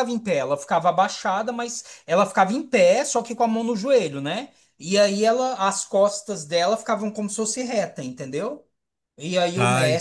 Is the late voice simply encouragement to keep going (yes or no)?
yes